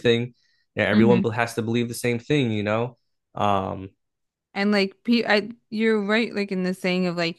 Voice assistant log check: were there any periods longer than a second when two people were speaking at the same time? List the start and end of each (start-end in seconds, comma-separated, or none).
none